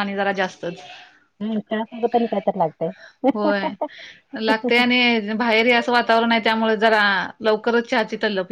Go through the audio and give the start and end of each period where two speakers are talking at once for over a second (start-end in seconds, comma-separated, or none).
none